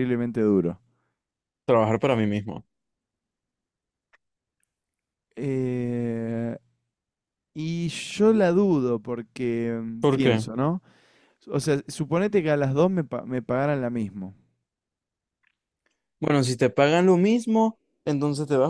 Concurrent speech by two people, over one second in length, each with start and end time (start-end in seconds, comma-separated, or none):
none